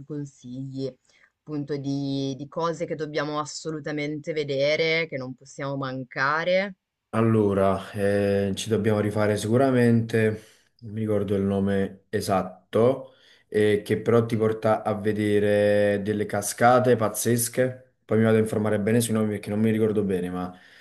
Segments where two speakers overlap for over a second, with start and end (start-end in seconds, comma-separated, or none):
none